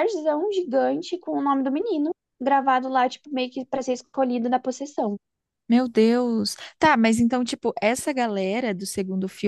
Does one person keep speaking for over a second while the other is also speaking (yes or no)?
no